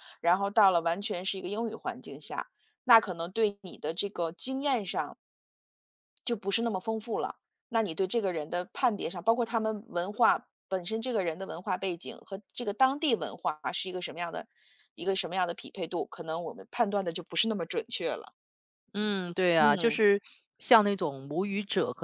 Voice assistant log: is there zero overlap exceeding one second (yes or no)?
yes